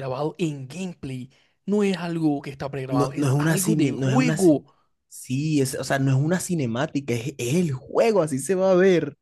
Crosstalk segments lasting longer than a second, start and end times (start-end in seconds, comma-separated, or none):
2.9-4.5